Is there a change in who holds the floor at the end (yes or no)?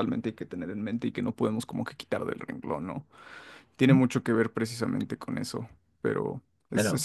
no